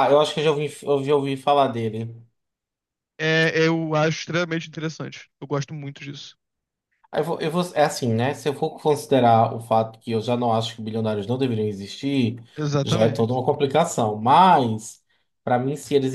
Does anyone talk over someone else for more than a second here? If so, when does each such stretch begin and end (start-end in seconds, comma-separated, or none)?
none